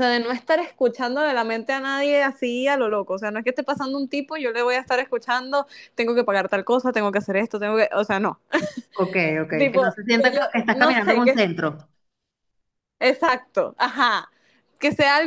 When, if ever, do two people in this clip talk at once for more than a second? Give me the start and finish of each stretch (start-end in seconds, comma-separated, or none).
9.6-11.4